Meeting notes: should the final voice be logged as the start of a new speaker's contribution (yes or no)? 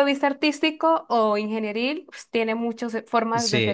yes